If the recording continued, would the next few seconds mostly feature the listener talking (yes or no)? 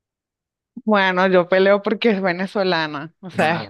no